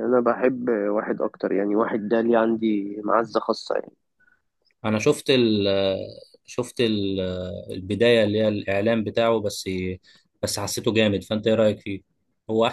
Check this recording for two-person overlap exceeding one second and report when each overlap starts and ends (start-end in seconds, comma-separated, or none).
none